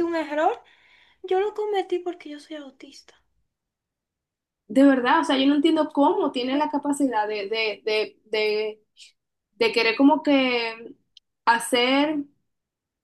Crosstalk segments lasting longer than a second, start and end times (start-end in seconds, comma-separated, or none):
none